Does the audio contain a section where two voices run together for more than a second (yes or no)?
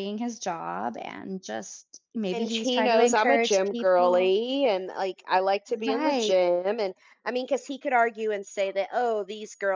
yes